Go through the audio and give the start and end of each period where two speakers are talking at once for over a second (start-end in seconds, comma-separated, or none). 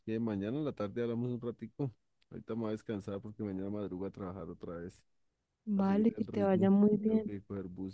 5.8-7.3